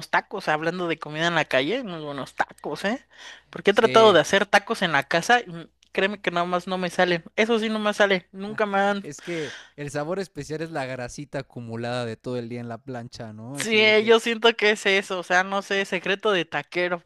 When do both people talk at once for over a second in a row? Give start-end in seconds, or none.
none